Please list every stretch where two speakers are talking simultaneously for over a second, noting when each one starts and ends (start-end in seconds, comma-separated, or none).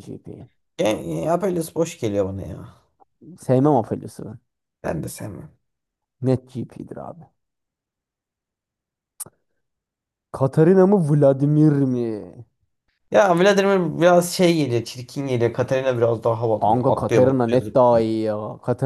16.6-18.1